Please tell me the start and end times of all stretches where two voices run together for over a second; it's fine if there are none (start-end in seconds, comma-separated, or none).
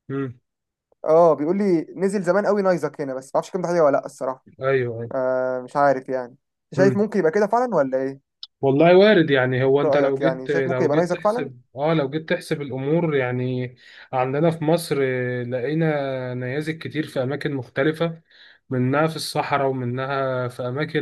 9.8-11.5